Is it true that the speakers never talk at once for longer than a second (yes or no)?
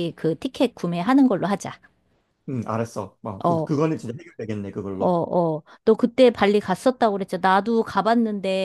yes